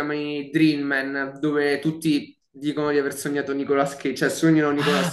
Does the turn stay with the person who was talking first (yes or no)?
no